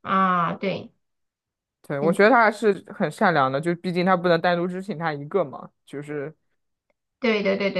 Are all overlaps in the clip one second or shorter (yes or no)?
yes